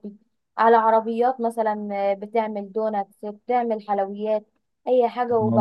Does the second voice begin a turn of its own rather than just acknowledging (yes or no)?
yes